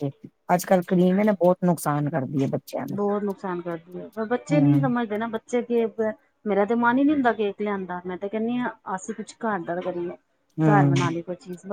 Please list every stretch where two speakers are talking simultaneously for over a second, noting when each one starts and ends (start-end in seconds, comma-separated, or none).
none